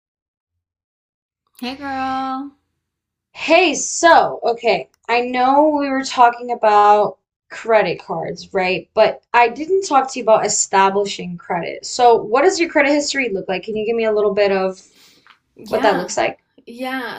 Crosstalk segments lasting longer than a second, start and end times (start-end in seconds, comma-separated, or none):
none